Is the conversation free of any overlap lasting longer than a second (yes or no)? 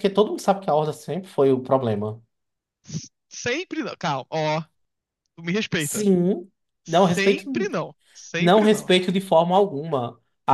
yes